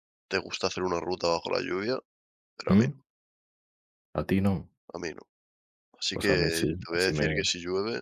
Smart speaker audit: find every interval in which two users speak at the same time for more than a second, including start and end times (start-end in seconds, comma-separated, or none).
6.1-7.3